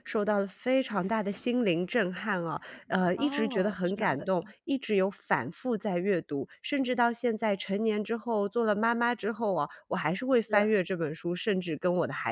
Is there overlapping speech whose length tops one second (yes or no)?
yes